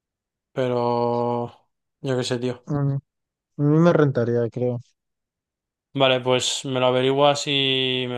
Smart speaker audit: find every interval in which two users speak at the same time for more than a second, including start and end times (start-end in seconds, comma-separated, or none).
none